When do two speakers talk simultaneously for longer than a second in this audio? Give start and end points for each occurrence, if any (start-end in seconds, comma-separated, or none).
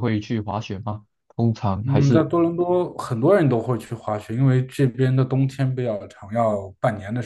none